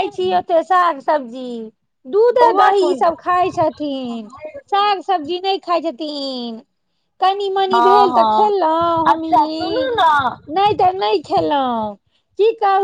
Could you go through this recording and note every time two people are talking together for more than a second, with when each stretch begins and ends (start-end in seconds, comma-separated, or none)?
7.7-9.9